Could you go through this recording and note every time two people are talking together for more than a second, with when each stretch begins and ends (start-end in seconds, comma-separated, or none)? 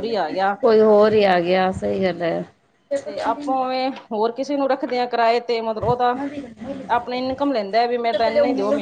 1.0-2.3